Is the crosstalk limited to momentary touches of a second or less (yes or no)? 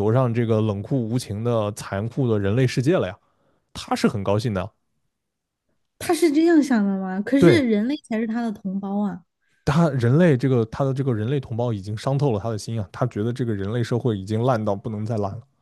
yes